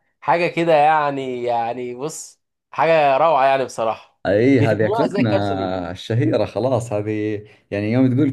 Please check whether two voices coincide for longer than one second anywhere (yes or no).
yes